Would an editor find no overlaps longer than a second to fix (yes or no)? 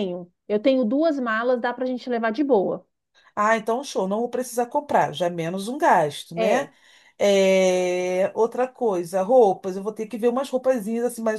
yes